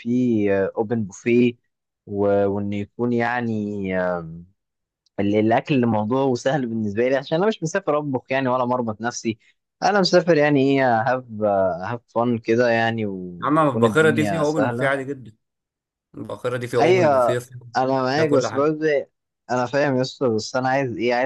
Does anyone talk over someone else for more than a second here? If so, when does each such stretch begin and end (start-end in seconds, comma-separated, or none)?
13.4-14.9